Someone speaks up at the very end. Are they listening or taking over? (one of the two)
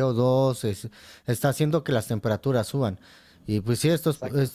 listening